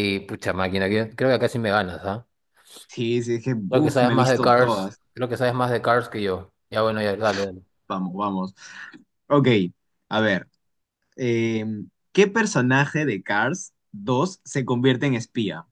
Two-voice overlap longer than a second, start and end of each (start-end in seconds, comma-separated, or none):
3.7-5.0